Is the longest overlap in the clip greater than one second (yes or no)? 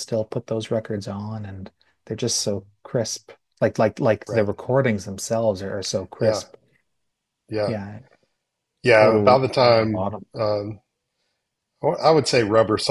yes